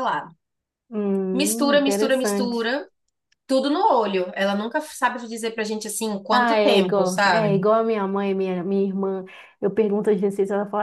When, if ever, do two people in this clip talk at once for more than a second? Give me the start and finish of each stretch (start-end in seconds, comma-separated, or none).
1.3-2.7, 6.3-7.6